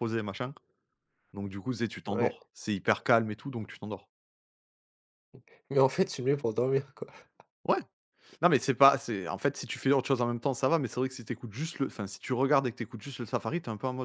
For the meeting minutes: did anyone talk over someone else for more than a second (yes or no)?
no